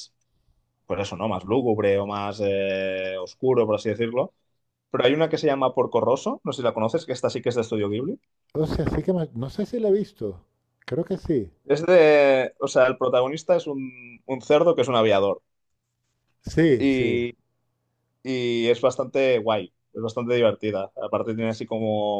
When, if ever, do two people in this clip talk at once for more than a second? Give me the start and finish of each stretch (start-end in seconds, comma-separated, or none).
none